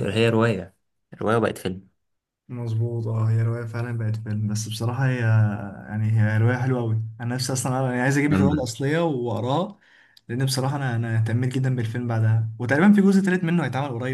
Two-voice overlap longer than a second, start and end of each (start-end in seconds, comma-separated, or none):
none